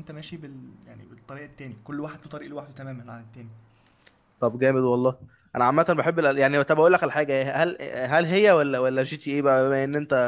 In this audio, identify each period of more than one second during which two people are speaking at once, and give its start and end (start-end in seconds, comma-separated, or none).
none